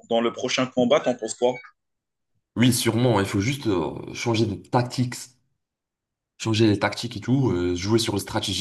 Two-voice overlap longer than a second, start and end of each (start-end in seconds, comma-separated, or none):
none